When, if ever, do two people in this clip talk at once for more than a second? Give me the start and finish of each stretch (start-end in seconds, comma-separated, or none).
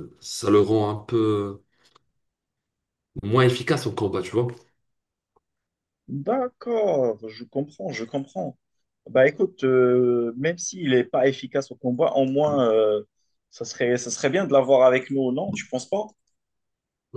none